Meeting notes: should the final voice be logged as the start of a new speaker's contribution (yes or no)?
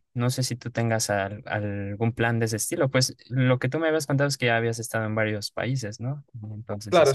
yes